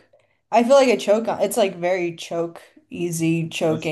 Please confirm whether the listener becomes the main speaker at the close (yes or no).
yes